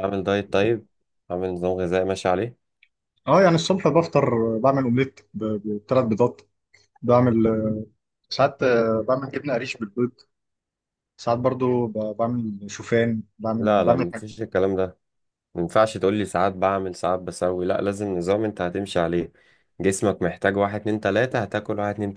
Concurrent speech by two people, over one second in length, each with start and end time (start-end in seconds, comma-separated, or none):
none